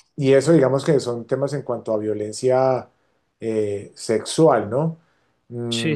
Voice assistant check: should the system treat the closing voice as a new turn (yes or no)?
no